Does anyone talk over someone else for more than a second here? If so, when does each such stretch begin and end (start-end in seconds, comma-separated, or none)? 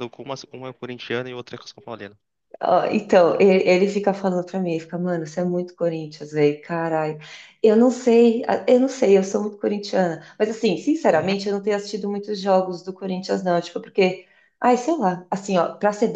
none